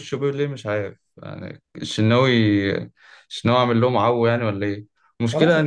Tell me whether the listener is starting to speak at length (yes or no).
no